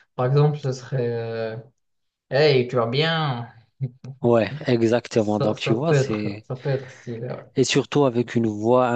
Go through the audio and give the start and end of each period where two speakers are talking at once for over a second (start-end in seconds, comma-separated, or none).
5.1-6.4